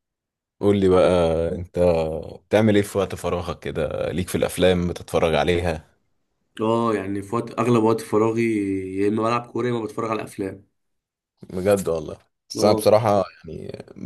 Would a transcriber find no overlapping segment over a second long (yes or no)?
yes